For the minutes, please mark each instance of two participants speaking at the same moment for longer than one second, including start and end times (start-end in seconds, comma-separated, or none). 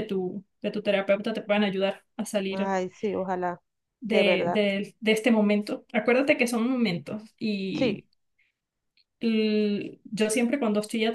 none